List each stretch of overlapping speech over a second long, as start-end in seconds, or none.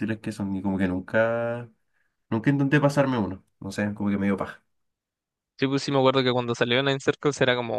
none